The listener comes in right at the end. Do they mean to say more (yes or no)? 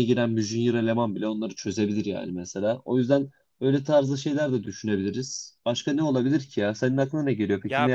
yes